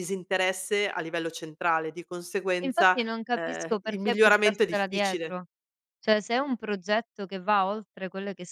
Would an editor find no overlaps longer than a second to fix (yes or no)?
no